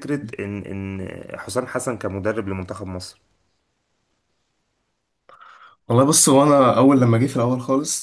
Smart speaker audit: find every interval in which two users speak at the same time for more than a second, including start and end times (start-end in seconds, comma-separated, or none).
none